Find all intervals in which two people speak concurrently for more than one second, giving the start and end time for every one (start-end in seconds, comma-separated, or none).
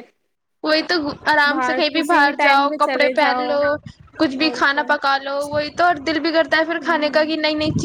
1.5-3.5